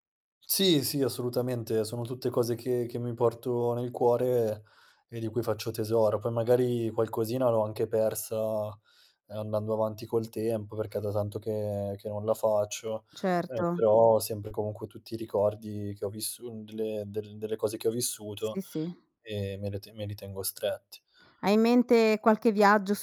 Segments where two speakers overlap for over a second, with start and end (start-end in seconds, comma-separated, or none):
none